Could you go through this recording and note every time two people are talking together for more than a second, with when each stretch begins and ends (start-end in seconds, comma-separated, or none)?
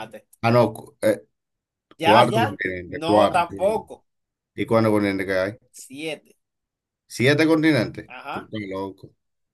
2.0-3.4